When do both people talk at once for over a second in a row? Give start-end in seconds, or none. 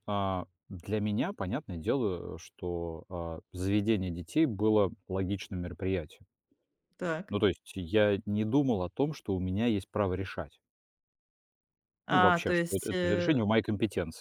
12.1-13.4